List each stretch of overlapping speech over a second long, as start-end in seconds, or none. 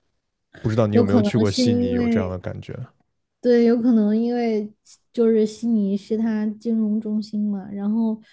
0.9-2.4